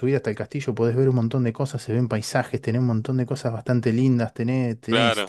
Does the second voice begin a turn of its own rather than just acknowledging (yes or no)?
no